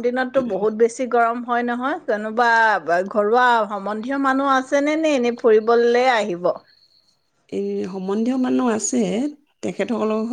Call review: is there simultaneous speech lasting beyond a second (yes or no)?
no